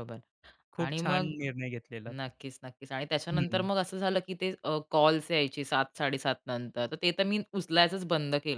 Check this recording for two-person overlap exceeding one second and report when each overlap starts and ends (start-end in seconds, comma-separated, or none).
none